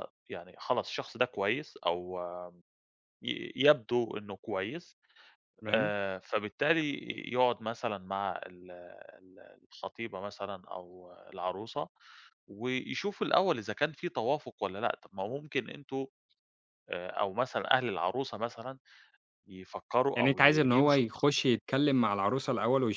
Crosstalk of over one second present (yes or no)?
yes